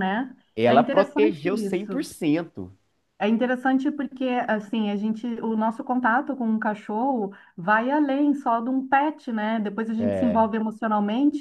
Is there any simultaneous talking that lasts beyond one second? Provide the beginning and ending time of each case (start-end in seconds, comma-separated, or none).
0.6-2.1